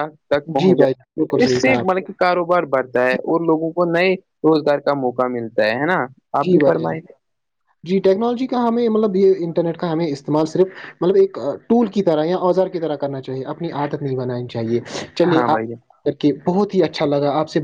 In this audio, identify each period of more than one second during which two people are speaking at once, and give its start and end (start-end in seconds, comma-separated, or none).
0.6-1.9